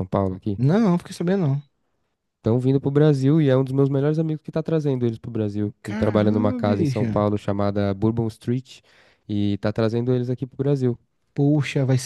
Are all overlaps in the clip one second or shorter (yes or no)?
no